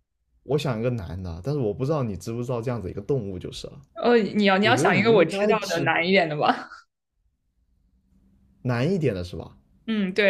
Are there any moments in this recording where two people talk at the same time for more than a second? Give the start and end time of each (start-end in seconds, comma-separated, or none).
4.6-5.9